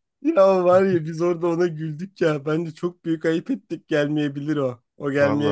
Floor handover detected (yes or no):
yes